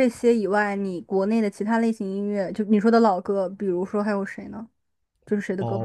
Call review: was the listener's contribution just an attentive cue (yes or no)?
no